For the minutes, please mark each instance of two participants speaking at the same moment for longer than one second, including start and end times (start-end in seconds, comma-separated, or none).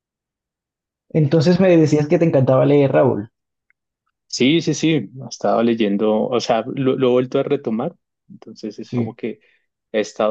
none